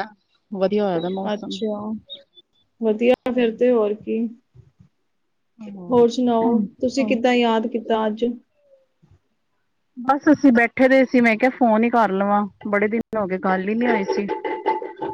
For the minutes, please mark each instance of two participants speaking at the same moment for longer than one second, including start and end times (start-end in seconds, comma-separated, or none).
none